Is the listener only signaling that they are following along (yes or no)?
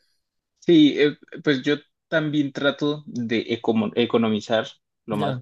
yes